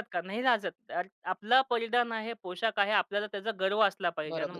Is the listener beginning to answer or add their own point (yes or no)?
yes